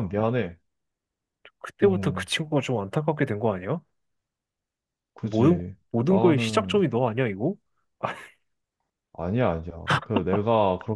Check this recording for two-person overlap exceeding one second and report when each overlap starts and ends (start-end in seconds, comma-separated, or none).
5.2-6.8